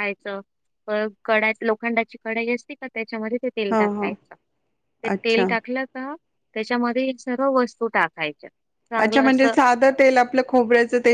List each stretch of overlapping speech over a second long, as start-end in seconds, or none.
none